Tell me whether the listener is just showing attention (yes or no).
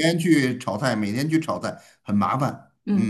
no